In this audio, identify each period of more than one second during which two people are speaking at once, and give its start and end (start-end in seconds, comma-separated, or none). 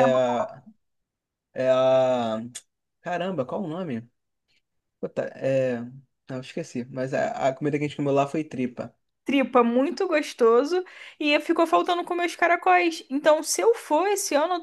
none